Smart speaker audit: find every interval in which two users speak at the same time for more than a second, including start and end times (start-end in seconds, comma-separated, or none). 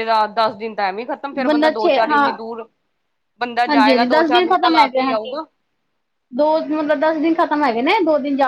3.7-5.4